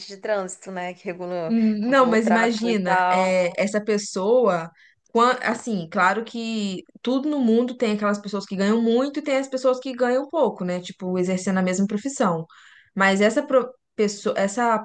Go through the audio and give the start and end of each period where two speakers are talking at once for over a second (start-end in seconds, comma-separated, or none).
1.5-3.4